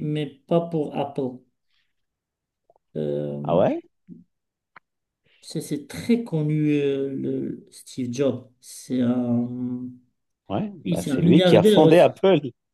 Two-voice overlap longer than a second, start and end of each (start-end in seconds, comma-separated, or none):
10.8-12.1